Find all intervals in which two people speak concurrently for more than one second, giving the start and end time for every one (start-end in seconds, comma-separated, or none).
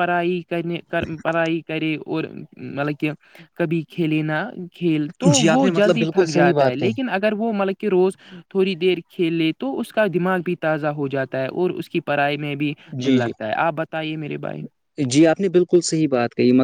5.4-6.9